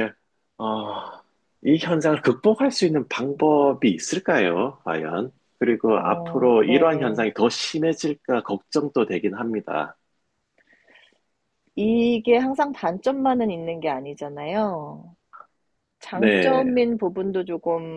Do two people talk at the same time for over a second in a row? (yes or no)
yes